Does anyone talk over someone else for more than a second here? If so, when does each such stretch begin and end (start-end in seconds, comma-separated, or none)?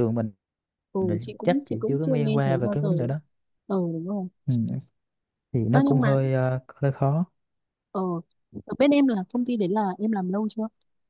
1.0-2.9